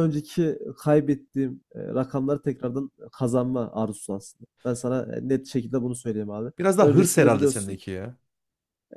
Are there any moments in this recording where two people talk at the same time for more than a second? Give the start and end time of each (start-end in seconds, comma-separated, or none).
6.6-7.8